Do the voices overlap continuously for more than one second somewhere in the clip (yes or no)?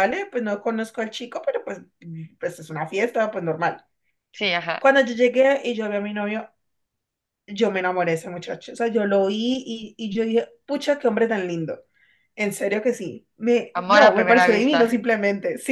yes